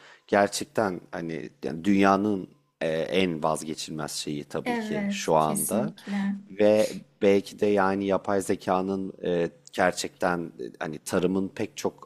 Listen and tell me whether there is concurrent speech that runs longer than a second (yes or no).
yes